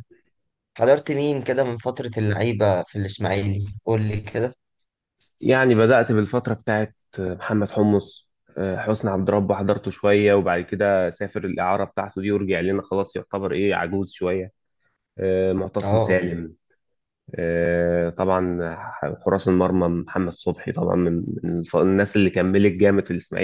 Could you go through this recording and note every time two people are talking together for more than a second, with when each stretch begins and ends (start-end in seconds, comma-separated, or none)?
none